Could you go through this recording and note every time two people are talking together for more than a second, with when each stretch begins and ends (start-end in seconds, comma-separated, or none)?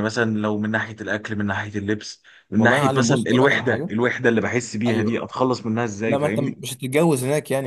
2.6-3.9